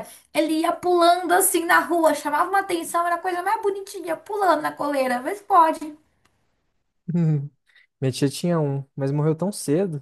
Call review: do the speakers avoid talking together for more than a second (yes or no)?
yes